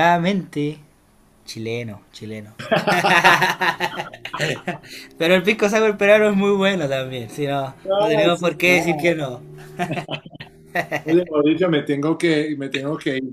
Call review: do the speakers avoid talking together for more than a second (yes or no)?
no